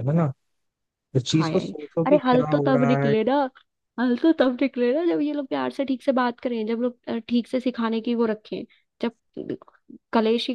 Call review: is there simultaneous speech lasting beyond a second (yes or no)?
yes